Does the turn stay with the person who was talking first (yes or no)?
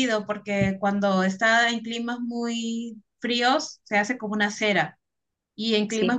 yes